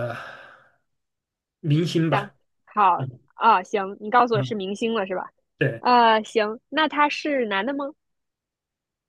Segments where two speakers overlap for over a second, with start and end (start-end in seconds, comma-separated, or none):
none